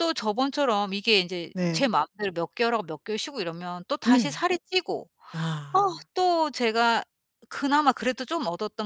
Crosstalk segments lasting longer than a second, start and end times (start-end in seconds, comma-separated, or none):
none